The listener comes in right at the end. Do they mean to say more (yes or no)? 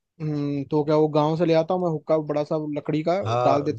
yes